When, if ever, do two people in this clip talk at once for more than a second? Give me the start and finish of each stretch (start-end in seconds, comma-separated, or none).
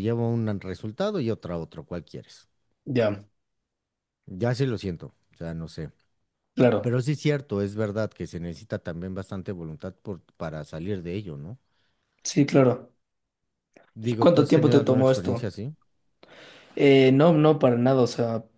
14.0-15.5